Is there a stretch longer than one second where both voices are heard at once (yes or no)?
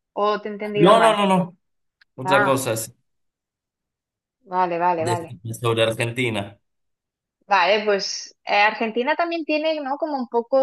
no